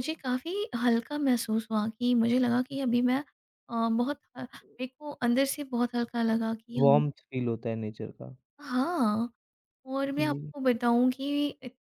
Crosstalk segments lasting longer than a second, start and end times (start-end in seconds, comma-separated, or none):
none